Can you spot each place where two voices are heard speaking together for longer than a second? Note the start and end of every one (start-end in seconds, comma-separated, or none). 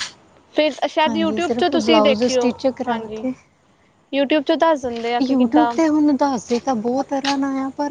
1.1-3.2